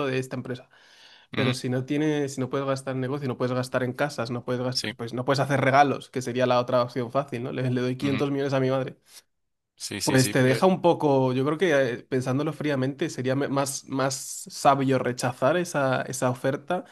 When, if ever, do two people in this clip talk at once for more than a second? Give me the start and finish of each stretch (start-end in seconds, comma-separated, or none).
none